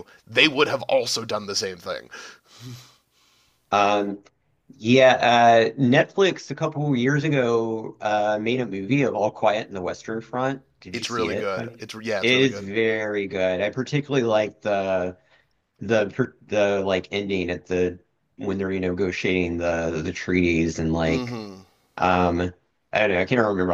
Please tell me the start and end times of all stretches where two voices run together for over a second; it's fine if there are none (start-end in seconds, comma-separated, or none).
10.9-12.7